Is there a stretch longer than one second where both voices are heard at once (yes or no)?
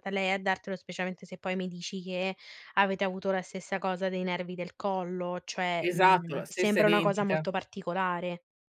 yes